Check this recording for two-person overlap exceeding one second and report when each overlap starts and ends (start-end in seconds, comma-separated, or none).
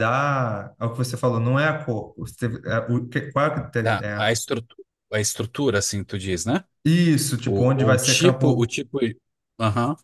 7.4-8.7